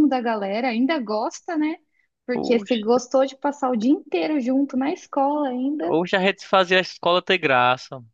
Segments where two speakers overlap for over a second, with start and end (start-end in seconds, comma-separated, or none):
none